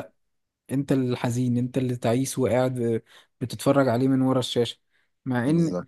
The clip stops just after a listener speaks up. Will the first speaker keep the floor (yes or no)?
yes